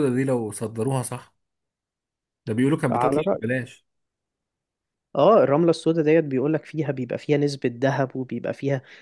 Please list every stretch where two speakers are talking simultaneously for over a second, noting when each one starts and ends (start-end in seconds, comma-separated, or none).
none